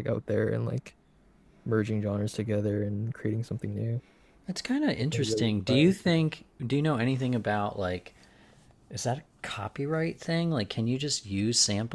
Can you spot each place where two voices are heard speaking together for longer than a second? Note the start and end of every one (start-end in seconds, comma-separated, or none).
5.0-6.3